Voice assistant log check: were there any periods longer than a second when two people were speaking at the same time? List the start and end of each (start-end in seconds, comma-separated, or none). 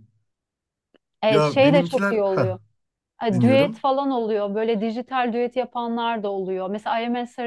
1.3-2.6